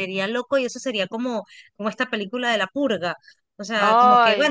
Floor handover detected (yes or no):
no